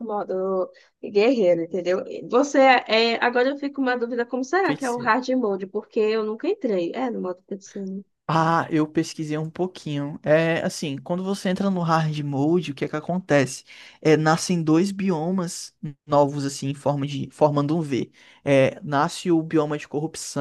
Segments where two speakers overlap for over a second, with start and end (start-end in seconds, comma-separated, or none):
none